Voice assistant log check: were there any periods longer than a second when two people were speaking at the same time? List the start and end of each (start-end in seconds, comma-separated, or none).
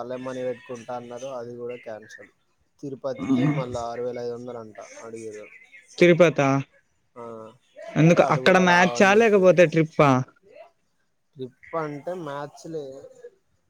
8.0-9.7